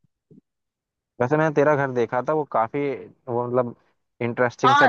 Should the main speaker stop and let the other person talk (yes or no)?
yes